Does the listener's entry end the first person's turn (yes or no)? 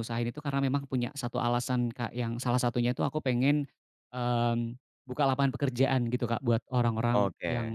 no